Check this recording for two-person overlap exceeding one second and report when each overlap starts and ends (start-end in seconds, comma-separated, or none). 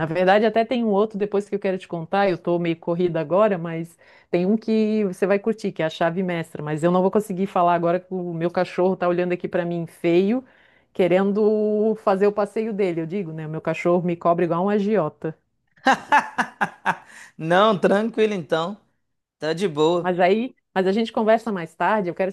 none